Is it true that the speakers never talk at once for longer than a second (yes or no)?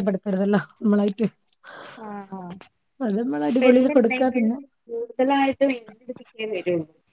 yes